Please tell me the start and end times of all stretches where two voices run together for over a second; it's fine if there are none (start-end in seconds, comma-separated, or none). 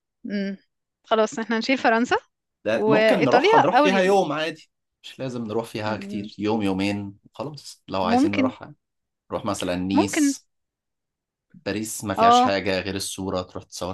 2.7-4.2